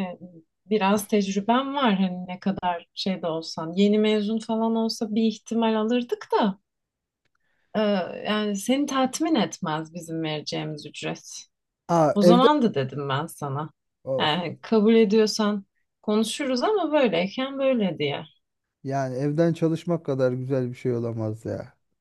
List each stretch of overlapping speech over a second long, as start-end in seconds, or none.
none